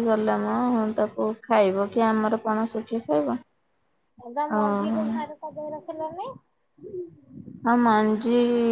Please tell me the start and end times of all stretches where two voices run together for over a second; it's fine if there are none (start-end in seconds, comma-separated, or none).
none